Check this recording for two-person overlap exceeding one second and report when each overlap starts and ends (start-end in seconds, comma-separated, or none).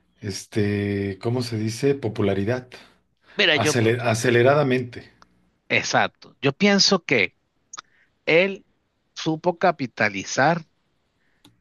none